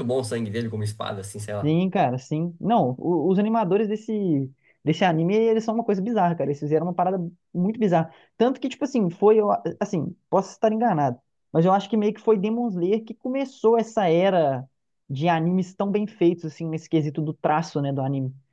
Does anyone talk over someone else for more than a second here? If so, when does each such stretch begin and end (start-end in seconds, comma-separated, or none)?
none